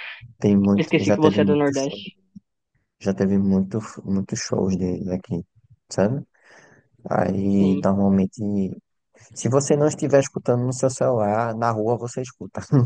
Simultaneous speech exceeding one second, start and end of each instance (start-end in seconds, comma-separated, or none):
0.7-2.0